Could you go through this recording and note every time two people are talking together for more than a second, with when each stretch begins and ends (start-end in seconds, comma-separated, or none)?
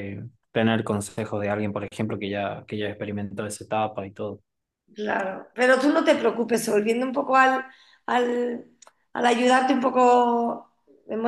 none